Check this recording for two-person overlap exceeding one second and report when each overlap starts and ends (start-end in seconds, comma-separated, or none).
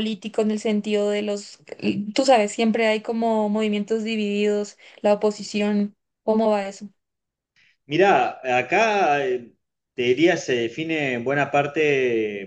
none